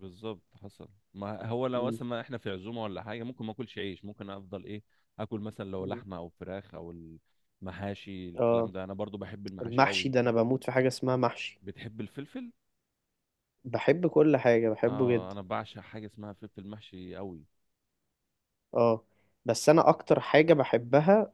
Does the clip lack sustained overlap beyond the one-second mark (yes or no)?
yes